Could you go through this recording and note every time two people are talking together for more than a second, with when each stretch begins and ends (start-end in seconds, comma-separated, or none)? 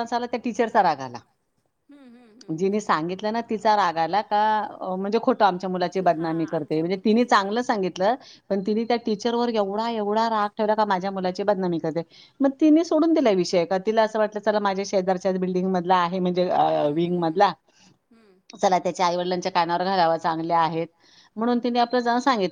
6.0-7.7